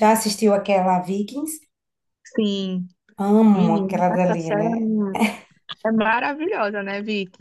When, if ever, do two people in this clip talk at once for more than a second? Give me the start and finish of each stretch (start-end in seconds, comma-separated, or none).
3.5-4.7